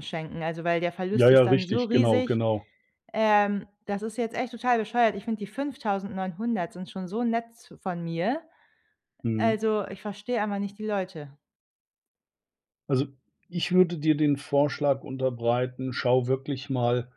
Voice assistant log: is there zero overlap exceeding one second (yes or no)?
no